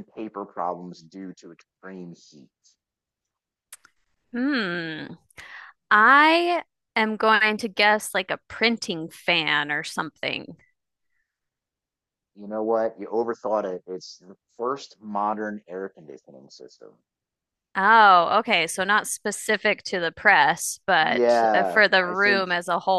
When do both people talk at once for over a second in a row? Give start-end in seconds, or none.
21.0-22.5